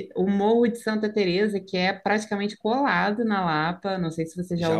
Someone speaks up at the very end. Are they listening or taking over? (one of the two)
taking over